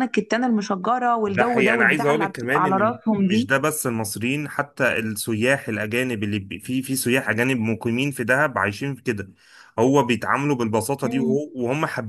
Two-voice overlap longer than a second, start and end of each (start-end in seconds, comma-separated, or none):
1.2-3.5